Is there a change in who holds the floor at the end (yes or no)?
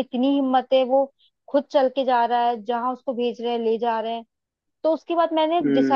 no